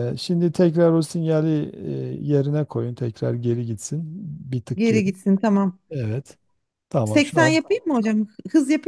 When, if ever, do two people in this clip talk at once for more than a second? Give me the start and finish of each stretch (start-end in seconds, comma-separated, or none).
none